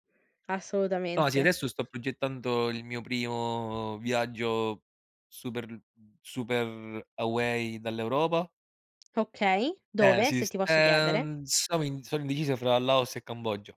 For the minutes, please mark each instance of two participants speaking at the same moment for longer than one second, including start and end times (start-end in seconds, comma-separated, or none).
10.0-11.3